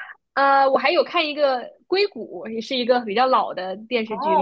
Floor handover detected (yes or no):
yes